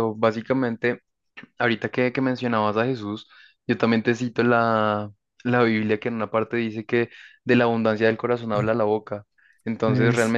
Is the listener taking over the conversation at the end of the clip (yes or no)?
no